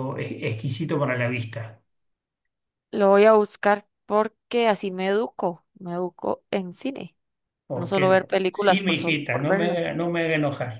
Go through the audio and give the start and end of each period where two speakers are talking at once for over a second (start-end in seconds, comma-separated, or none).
7.7-10.2